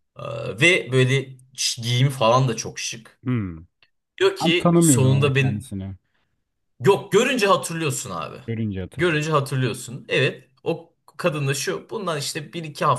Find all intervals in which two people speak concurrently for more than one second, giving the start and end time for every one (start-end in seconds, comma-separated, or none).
4.4-5.7